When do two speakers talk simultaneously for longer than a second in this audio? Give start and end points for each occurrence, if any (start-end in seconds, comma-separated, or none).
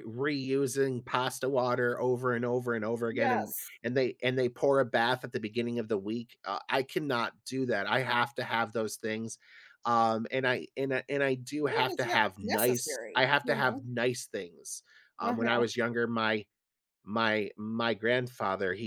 11.7-13.8